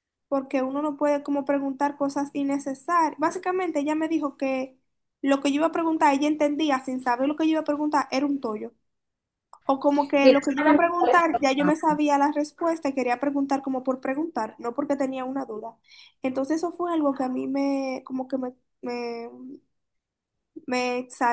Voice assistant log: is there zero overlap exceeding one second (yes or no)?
no